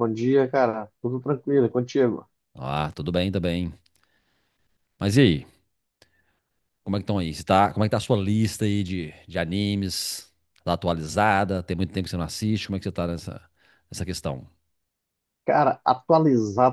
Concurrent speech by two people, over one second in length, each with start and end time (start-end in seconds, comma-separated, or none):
none